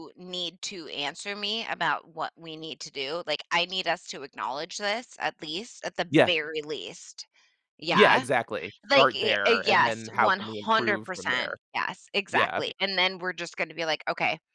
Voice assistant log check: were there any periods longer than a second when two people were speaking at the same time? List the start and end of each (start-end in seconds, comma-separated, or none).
8.9-11.6